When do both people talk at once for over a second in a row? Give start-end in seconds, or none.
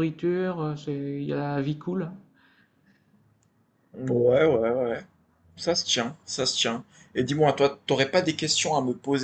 none